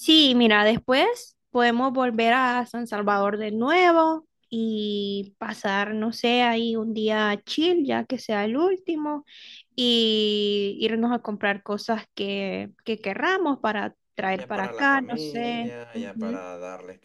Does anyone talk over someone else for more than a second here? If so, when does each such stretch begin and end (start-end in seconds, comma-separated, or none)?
14.3-16.5